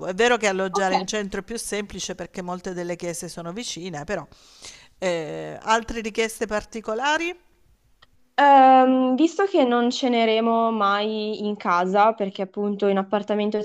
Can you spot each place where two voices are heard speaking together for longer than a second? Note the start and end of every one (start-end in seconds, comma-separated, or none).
none